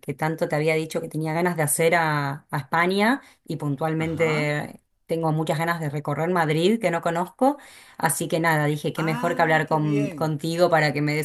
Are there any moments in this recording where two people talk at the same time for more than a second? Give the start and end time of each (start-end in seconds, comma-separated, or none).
8.9-10.3